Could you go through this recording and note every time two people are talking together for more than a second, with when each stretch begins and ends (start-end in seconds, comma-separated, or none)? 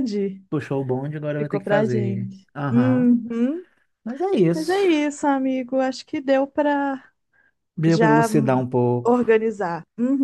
1.4-3.1